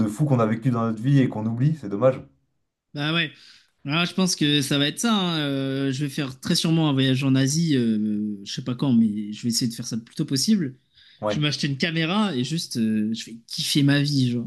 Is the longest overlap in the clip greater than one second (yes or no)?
no